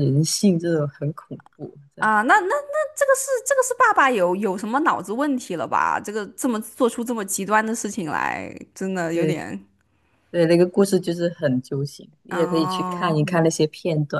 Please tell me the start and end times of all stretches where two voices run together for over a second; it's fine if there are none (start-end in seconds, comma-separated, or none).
12.3-13.5